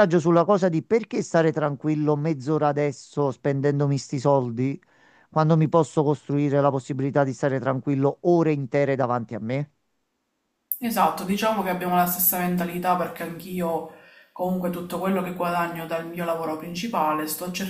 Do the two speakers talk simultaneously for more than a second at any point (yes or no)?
no